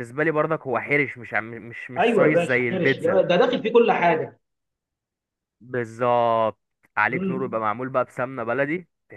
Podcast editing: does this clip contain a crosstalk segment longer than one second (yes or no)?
yes